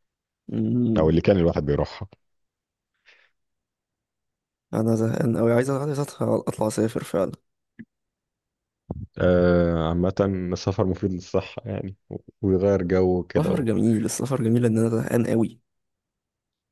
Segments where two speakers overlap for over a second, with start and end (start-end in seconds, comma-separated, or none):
none